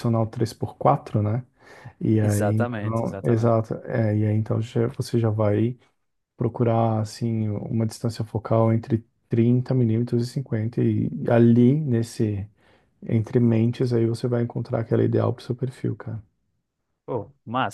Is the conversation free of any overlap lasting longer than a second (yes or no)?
no